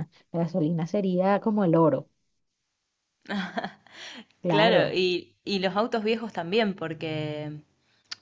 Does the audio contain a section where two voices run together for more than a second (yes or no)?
no